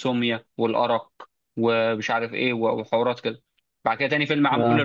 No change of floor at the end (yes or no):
yes